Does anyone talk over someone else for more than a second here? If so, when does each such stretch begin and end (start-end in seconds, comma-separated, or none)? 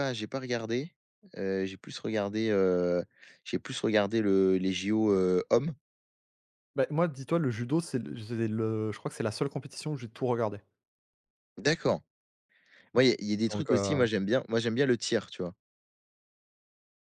none